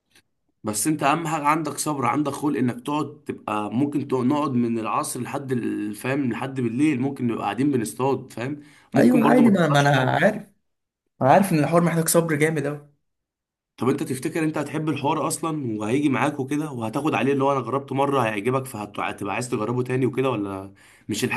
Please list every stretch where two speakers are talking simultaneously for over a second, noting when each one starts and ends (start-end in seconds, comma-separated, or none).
9.0-10.2